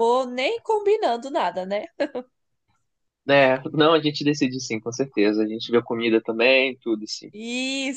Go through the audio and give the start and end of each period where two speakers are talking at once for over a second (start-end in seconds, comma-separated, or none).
none